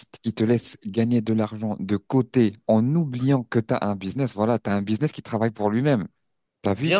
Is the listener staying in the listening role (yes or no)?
yes